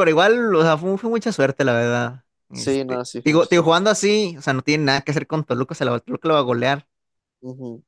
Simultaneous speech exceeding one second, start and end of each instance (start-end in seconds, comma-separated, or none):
2.5-3.8